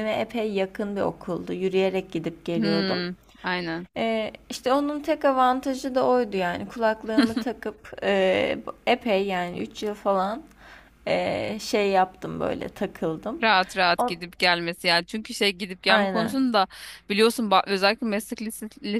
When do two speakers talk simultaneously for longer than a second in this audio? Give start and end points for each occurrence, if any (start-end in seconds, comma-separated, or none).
none